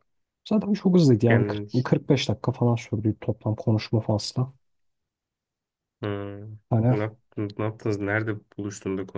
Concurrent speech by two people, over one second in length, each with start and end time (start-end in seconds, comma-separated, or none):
none